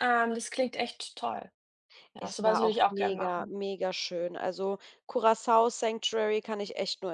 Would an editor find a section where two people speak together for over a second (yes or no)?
yes